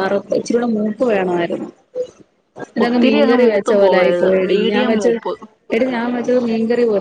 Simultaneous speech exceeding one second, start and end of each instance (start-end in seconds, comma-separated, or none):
2.8-5.2